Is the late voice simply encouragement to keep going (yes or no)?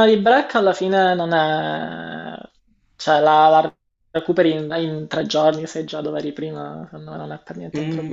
no